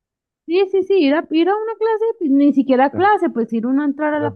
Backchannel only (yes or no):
no